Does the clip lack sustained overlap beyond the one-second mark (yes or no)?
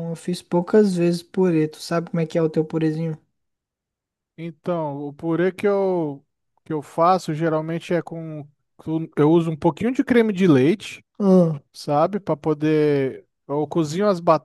yes